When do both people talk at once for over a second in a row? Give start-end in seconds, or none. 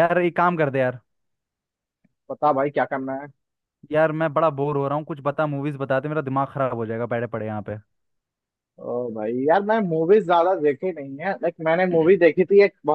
none